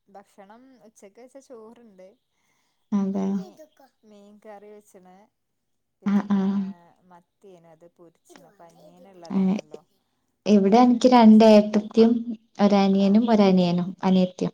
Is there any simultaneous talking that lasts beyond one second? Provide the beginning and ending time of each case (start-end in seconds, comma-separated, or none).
none